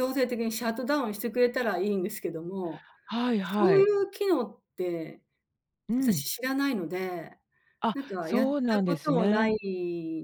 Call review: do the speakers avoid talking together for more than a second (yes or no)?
no